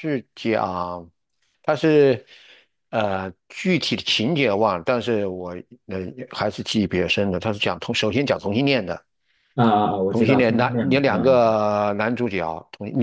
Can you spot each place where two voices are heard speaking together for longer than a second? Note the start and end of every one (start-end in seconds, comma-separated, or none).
10.1-11.6